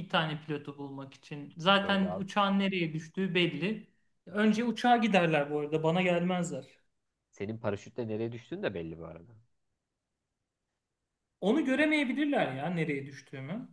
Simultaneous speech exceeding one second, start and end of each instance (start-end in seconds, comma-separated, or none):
none